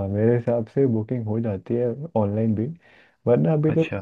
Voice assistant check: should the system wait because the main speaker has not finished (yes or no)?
yes